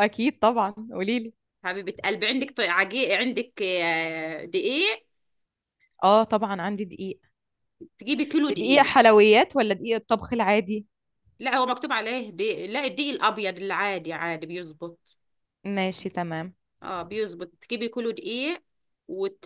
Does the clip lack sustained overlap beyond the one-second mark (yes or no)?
yes